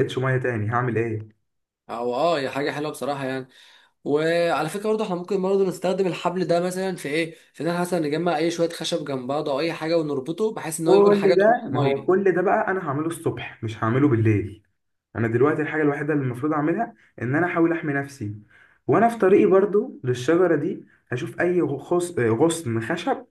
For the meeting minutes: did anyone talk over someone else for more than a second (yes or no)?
yes